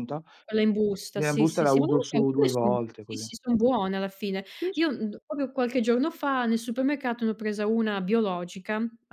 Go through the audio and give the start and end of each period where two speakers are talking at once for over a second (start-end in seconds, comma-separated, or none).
1.2-3.3